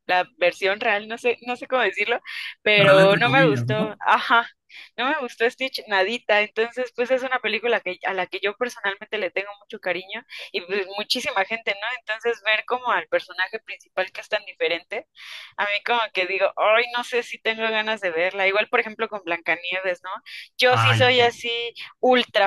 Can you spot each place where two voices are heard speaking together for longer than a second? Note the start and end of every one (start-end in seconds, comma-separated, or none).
2.8-4.0